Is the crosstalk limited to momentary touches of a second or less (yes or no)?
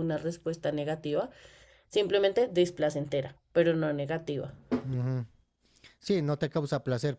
yes